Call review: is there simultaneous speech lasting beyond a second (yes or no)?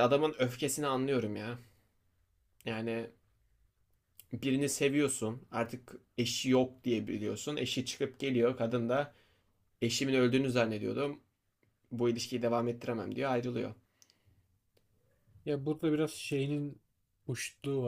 no